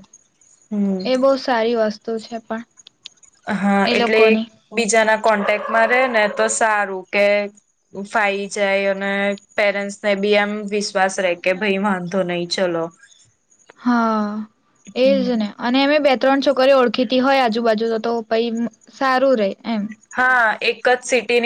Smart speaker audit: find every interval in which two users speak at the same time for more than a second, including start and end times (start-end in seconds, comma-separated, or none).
none